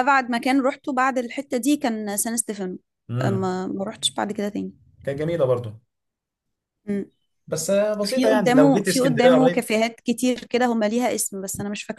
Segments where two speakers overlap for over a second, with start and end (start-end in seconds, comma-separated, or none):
8.0-9.6